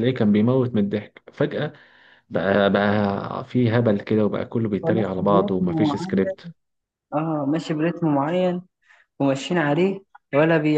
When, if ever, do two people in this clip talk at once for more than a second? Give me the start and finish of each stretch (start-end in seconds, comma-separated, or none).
4.8-6.2